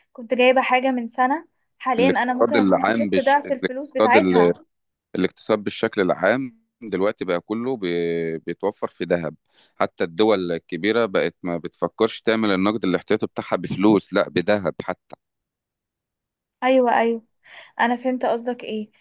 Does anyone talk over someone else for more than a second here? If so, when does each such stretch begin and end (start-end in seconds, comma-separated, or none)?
2.0-4.2